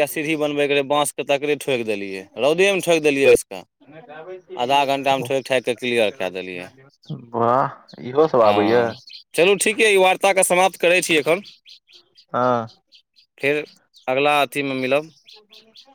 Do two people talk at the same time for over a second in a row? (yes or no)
no